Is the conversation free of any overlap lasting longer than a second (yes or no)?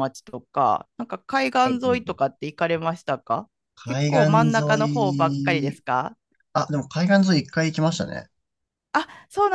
no